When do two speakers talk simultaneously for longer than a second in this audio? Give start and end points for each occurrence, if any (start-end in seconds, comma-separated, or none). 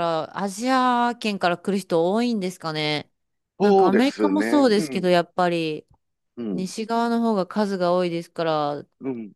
3.6-5.1